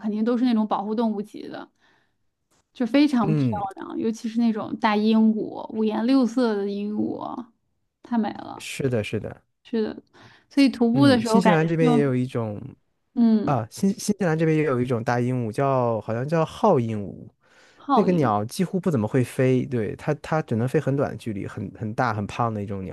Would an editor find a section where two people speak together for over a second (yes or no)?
yes